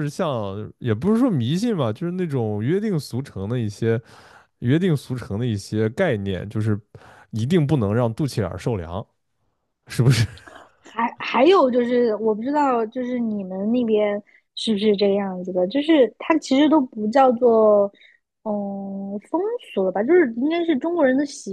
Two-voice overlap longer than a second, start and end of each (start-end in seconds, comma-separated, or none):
none